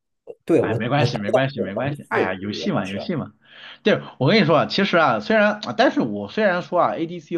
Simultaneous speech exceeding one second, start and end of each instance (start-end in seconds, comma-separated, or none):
0.6-3.0